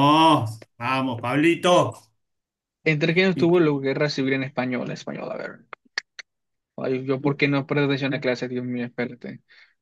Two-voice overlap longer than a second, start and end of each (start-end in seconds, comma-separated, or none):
none